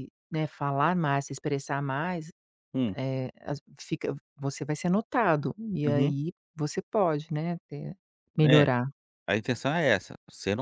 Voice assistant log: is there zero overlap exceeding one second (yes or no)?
yes